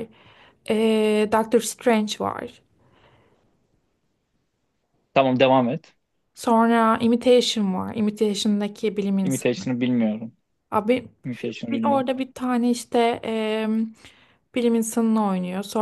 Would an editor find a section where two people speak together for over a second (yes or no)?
no